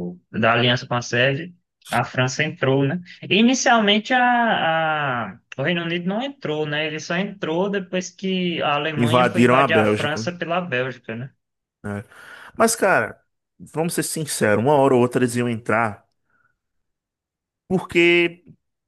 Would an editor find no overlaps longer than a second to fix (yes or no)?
no